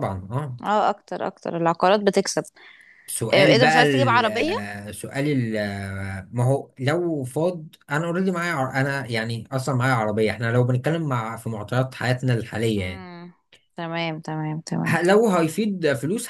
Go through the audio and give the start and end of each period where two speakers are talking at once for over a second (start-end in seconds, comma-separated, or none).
3.3-4.5